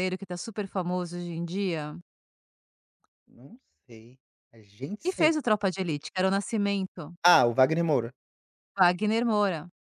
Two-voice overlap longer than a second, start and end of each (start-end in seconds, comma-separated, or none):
none